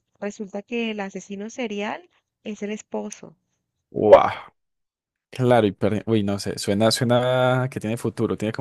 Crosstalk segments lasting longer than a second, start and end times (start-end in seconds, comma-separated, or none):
none